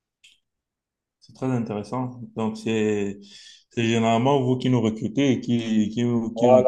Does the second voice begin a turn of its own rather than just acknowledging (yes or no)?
yes